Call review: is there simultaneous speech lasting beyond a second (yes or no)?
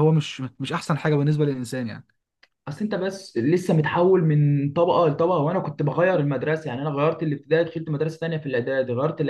no